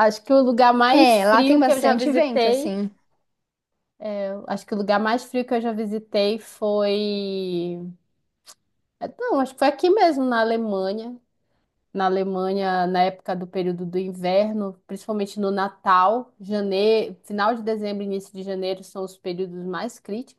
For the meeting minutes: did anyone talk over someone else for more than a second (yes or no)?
yes